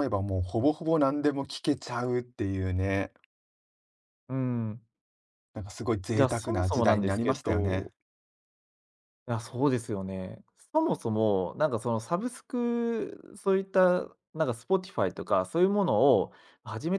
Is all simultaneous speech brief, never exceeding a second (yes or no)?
no